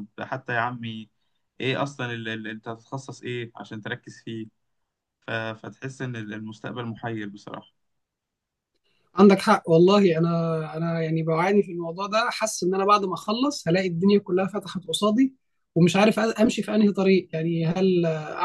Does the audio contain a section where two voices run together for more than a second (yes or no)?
no